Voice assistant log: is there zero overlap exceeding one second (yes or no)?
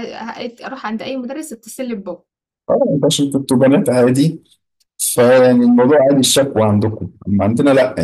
yes